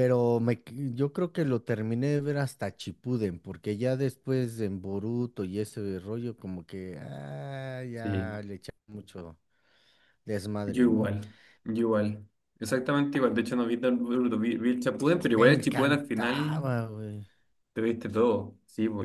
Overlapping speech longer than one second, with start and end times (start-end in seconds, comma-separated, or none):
15.3-16.6